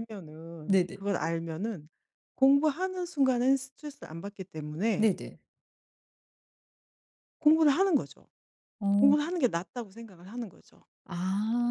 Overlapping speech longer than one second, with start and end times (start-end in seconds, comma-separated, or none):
none